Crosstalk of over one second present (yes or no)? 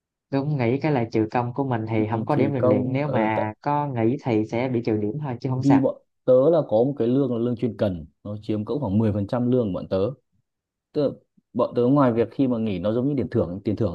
yes